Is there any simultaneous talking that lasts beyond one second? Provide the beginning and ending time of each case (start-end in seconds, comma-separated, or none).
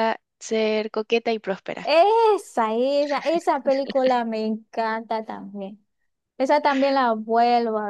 none